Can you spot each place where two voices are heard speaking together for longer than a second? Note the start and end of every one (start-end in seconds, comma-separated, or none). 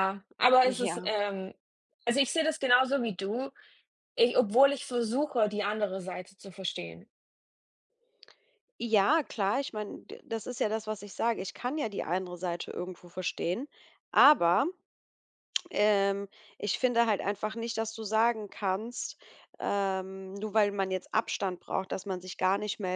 none